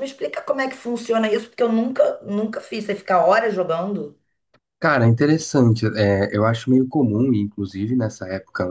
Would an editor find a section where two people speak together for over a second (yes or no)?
no